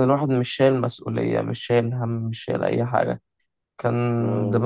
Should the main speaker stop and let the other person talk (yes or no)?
no